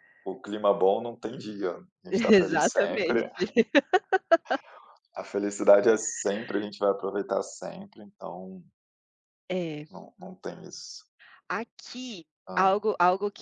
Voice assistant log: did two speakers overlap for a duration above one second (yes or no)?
yes